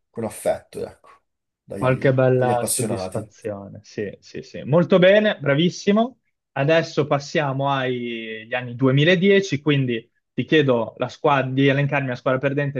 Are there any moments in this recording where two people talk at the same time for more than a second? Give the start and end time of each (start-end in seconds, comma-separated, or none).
1.7-3.3